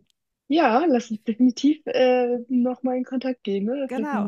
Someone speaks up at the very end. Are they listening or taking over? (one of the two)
taking over